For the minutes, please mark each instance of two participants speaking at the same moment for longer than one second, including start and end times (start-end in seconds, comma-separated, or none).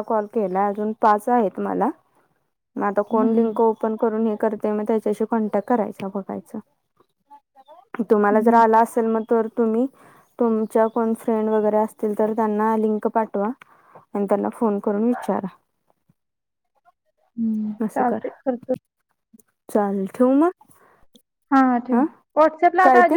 none